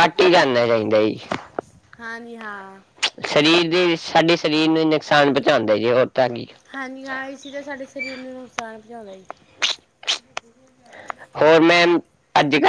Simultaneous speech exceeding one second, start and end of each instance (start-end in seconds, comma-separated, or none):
none